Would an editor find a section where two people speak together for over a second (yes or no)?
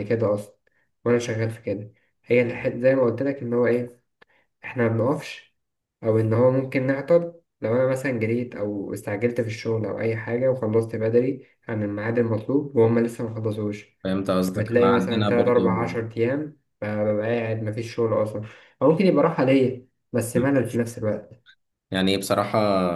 yes